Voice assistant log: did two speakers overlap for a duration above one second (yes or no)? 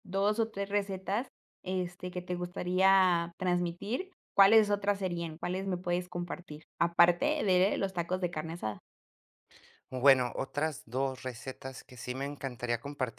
no